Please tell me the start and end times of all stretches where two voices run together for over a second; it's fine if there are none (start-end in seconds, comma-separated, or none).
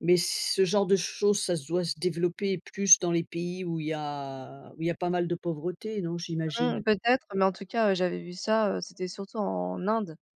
none